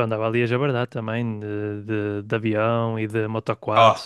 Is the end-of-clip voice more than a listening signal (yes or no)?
no